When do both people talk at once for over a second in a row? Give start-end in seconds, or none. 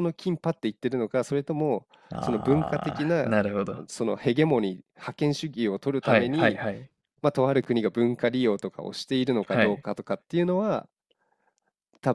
2.1-3.4